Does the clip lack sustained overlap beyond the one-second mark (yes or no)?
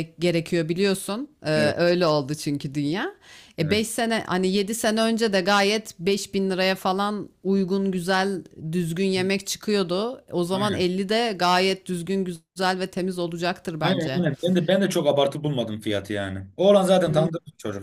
yes